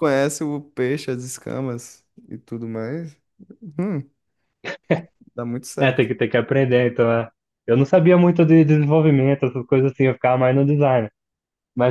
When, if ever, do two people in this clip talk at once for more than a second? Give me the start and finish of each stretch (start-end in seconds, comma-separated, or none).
none